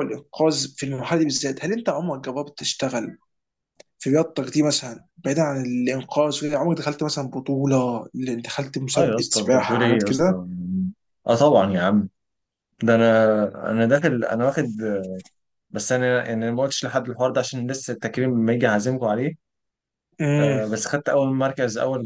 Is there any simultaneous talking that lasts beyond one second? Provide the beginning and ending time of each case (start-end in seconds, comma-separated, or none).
8.9-10.3